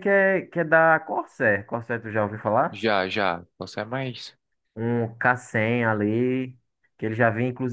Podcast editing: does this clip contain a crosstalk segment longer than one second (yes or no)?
no